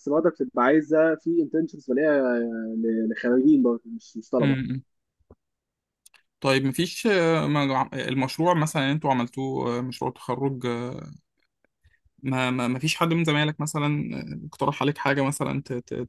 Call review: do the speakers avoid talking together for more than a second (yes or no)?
yes